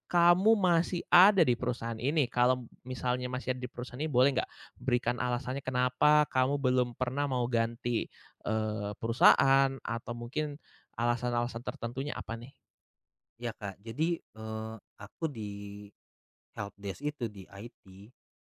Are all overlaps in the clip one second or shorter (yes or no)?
yes